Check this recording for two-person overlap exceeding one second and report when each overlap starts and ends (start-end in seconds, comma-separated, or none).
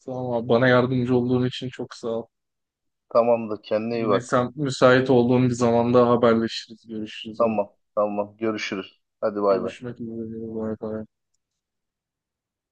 none